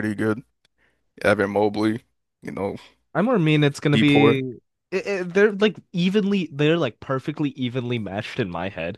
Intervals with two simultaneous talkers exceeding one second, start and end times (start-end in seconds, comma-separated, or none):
none